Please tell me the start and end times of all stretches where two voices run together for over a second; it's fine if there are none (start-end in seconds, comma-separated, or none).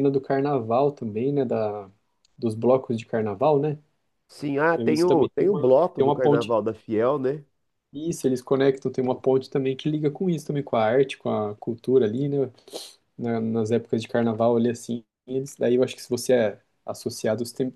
4.7-6.6